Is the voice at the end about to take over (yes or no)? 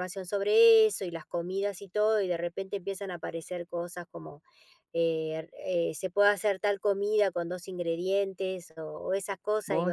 no